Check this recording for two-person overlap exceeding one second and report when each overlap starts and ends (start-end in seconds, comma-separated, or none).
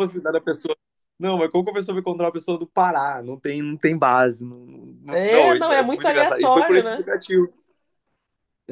5.1-7.1